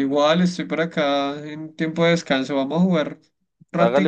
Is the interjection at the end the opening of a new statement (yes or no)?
yes